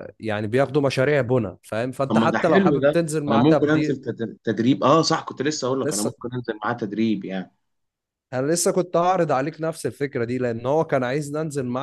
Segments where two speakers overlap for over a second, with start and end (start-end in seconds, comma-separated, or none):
2.1-4.0